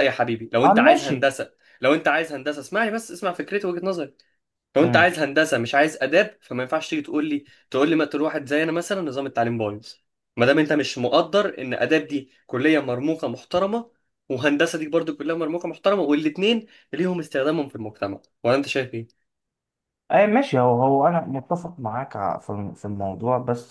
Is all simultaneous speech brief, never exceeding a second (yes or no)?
yes